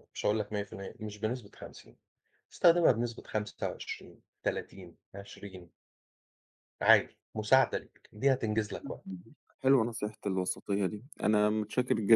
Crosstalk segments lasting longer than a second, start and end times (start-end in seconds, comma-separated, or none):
none